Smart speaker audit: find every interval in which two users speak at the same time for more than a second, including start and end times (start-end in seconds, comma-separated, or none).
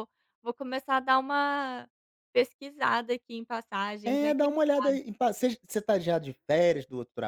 none